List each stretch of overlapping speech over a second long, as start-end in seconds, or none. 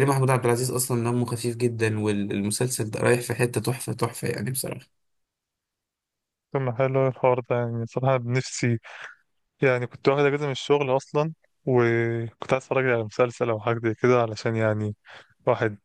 none